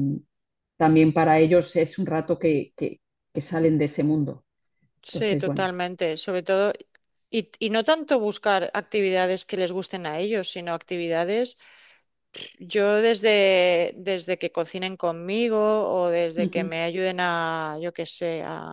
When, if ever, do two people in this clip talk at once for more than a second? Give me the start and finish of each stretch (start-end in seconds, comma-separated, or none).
none